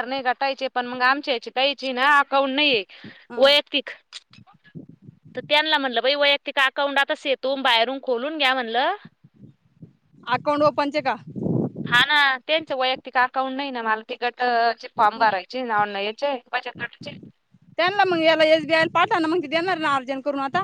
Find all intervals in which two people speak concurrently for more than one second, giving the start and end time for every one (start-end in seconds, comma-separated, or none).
none